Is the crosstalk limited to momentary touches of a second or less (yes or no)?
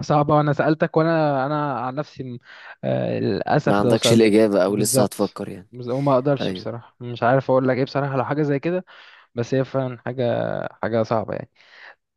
no